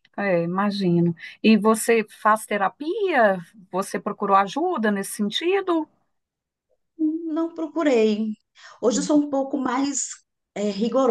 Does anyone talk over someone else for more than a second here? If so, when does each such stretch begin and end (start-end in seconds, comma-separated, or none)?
none